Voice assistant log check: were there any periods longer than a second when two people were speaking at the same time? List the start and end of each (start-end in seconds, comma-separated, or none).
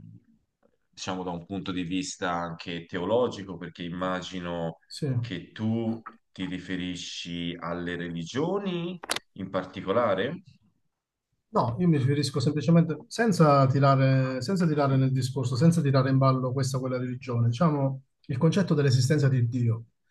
none